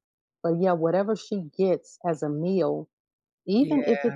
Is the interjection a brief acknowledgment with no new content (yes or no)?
yes